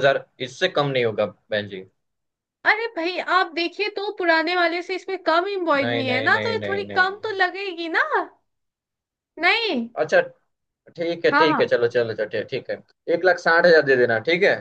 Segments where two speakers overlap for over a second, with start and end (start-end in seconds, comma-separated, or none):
5.8-7.1